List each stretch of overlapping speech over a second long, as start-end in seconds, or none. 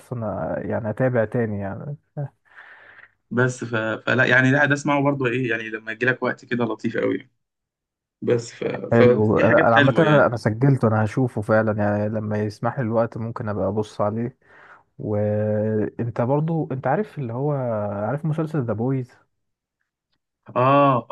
8.9-10.4